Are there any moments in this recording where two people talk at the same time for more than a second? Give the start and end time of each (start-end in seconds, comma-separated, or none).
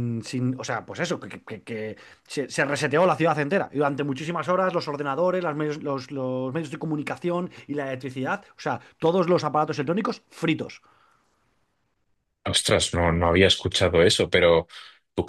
none